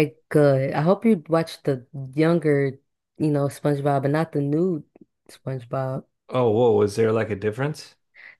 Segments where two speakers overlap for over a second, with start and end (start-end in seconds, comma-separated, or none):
none